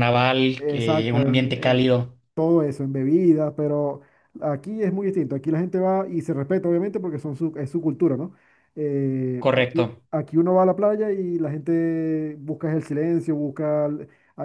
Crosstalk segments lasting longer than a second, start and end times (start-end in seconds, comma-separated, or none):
0.6-1.9